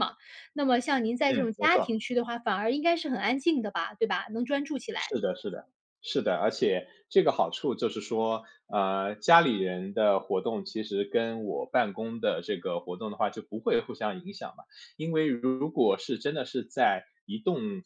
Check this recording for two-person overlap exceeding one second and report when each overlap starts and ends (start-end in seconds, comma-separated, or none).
none